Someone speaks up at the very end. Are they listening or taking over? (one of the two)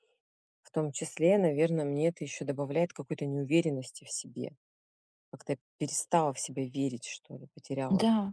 taking over